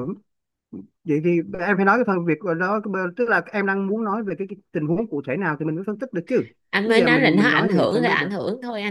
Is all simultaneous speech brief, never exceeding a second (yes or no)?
no